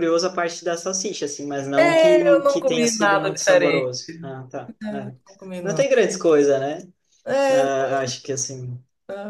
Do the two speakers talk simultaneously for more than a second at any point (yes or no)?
yes